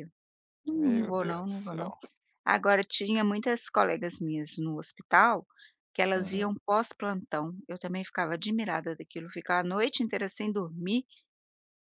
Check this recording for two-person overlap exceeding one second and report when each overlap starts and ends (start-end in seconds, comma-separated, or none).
0.7-1.9